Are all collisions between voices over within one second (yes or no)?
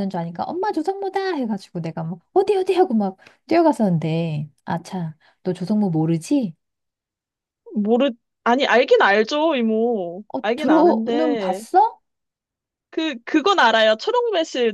no